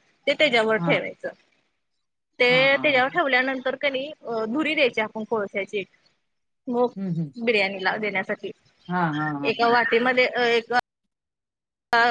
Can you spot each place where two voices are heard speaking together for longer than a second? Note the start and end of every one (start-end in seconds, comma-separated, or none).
none